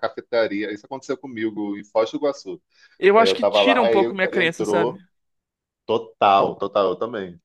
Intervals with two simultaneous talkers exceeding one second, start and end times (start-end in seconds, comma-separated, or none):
3.1-5.0